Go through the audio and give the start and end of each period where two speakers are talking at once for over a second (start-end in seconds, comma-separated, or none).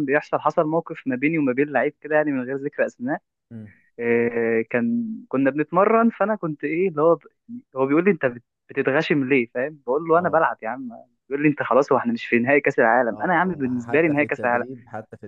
13.1-14.7